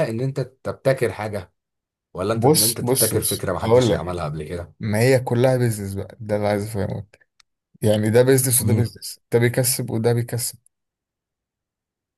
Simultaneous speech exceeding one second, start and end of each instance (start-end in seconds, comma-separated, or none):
2.3-4.2